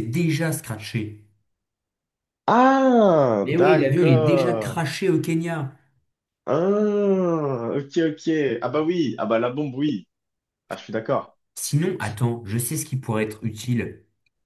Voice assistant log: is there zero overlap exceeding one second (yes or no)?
no